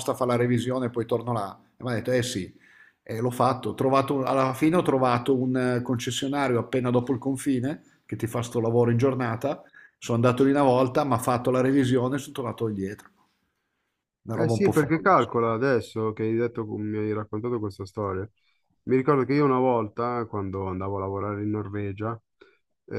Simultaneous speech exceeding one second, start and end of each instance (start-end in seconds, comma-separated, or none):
14.3-15.5